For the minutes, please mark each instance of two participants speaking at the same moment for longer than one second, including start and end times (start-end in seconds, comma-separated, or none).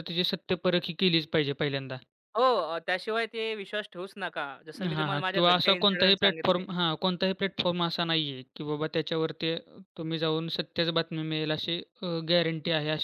5.0-6.7